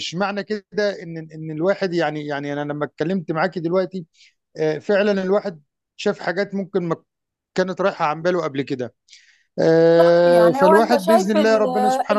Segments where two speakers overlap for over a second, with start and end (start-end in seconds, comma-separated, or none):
9.8-11.7